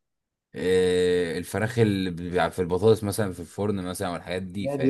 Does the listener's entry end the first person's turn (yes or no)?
yes